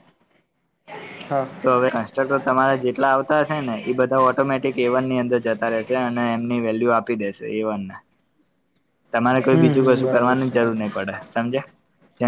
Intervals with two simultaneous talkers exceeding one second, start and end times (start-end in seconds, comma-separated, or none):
9.5-10.9